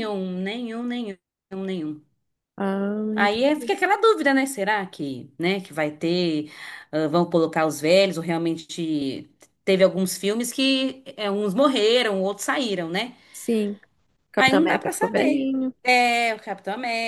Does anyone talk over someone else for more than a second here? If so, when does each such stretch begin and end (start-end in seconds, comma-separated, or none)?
14.4-15.7